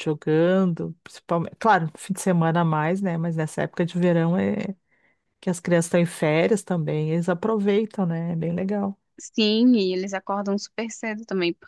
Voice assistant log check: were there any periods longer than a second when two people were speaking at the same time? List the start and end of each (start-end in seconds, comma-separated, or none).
none